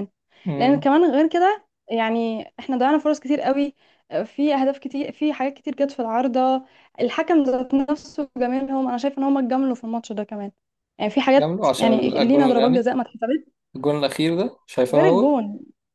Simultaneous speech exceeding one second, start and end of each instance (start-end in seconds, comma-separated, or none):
11.3-12.9